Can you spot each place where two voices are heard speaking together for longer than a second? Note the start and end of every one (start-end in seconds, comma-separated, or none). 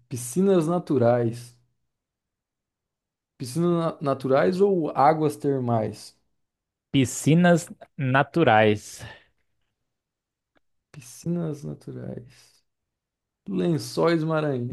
none